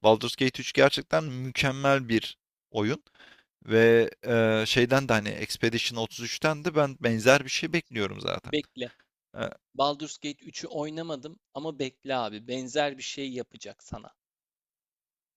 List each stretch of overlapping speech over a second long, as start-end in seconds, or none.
none